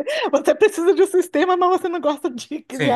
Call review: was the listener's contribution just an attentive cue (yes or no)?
no